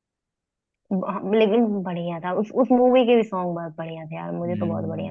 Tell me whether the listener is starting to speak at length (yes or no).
yes